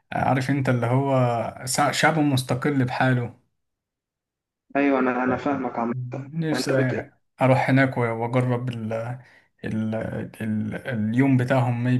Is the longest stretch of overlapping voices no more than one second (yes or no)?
yes